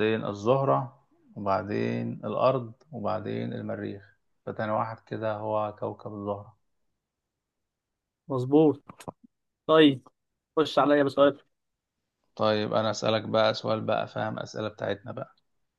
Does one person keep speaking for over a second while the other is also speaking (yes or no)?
no